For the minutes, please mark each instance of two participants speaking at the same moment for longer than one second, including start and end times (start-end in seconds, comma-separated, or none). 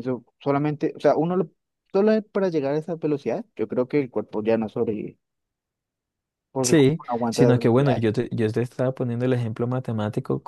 6.6-8.1